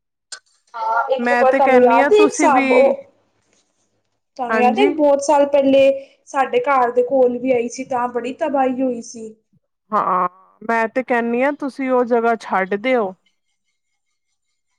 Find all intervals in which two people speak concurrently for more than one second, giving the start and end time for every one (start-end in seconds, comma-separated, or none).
1.2-2.7